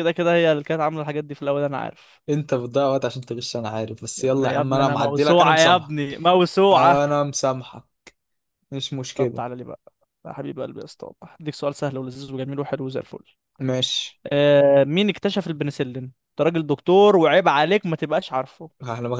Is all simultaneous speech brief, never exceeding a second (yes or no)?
no